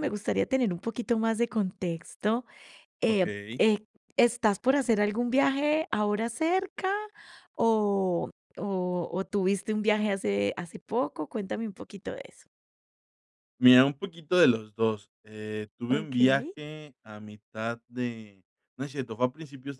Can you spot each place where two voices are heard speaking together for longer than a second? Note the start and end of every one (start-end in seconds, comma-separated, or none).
none